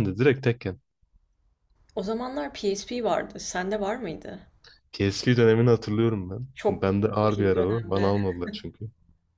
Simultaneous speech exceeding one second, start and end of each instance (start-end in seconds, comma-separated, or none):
6.5-8.1